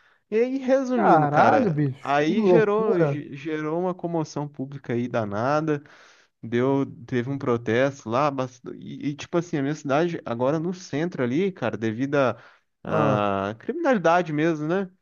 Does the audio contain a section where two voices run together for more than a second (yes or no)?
yes